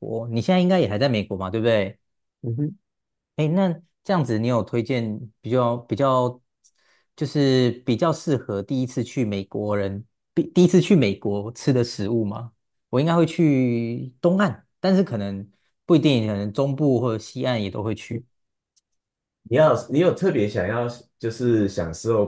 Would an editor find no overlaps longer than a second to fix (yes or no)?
yes